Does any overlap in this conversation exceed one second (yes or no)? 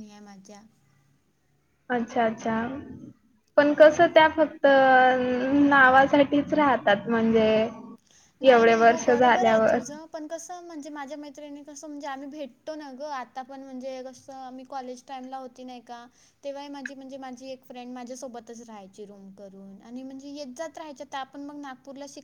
yes